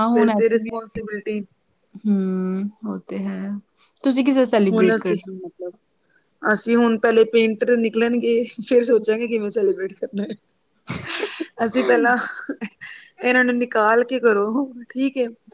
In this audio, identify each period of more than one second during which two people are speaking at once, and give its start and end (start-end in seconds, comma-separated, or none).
none